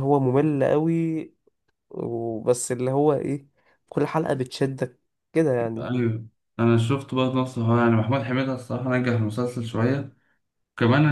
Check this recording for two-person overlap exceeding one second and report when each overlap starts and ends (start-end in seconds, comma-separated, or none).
none